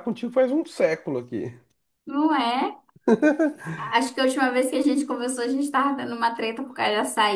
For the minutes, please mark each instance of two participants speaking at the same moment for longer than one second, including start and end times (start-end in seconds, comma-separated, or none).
none